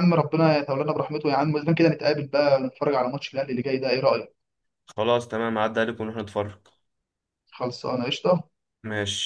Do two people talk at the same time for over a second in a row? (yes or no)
no